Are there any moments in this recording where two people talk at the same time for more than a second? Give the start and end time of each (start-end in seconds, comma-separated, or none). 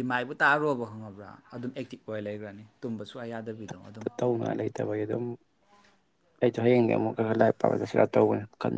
none